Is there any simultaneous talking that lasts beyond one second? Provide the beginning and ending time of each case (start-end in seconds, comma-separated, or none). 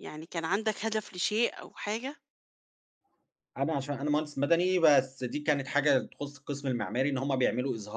none